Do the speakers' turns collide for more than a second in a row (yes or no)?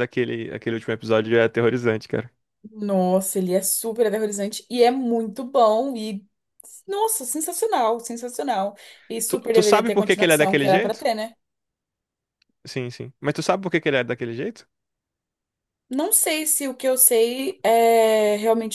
yes